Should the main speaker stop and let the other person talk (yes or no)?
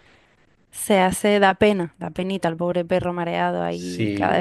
yes